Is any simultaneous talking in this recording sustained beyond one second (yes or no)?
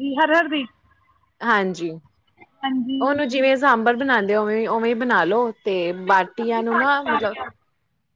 yes